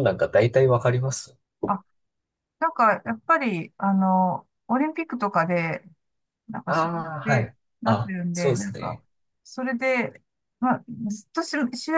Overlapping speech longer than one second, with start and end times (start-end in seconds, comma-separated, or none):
6.7-9.0